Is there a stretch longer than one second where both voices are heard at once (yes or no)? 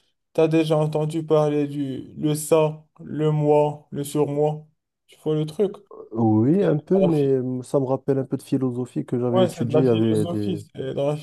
yes